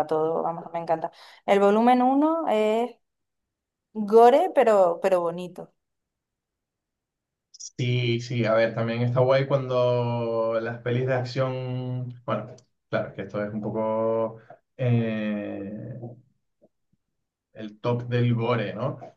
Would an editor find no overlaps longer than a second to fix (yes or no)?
yes